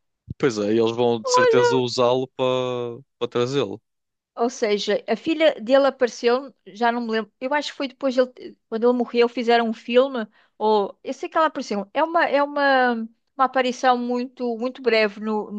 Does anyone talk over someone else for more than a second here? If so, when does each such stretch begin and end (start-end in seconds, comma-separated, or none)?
none